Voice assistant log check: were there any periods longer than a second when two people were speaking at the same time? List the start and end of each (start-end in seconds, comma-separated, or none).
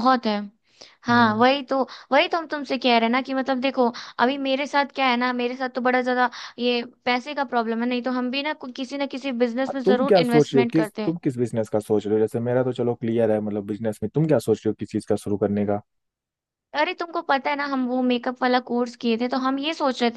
9.7-11.1